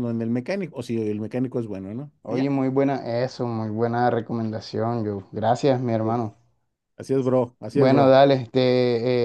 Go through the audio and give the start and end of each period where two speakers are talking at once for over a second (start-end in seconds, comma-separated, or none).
none